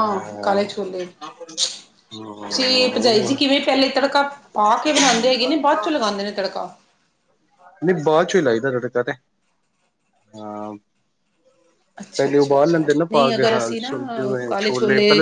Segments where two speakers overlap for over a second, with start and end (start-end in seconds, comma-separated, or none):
12.2-13.9